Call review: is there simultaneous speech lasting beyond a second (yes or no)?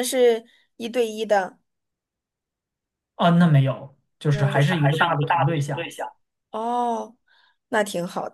yes